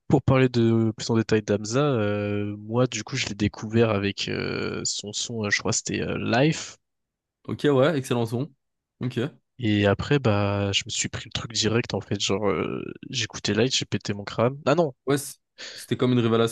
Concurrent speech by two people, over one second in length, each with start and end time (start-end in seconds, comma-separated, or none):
none